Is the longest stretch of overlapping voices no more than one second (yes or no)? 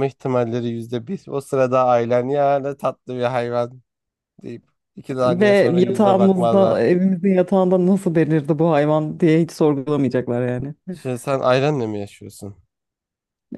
no